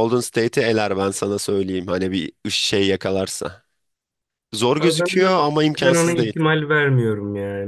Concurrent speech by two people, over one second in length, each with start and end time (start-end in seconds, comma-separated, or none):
4.8-6.3